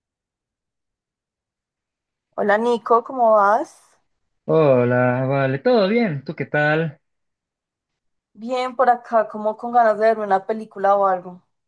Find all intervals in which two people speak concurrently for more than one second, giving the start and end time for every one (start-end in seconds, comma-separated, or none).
none